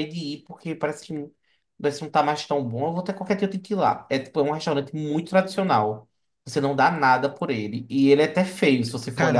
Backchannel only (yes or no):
no